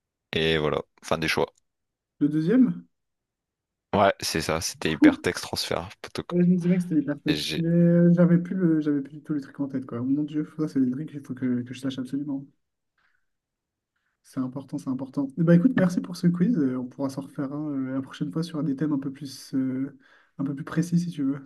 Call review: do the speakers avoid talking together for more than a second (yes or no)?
yes